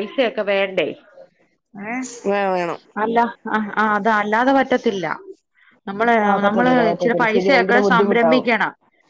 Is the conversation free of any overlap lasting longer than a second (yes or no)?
no